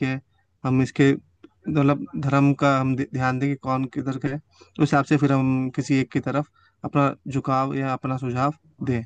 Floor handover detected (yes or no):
yes